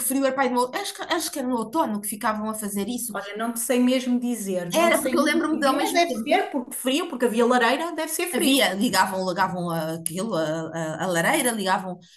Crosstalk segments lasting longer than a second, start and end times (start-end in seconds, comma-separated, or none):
4.8-6.3